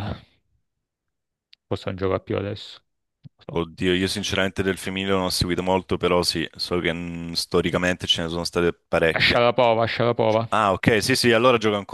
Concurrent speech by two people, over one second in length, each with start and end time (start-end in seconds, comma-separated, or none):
none